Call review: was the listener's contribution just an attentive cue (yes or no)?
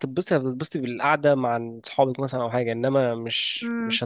no